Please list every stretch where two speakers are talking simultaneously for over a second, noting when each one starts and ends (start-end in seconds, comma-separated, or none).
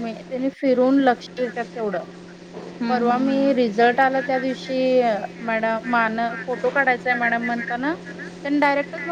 2.9-4.7